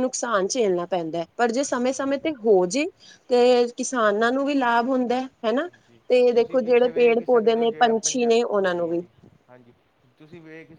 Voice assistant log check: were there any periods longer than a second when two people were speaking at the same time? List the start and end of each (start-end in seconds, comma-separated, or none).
6.1-9.0